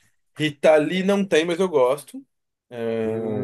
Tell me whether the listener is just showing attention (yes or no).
no